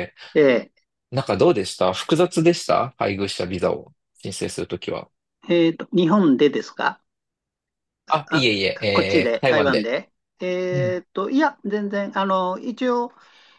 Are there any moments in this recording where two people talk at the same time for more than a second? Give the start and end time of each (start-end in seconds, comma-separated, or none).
none